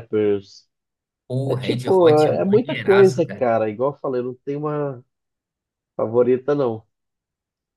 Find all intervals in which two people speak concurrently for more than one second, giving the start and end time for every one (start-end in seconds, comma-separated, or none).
1.5-3.5